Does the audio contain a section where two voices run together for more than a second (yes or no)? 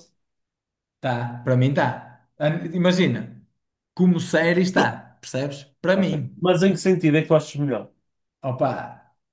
no